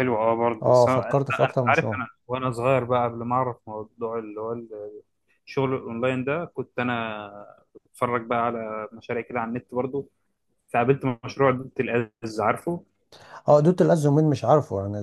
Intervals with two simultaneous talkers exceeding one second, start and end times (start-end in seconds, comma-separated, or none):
0.6-2.0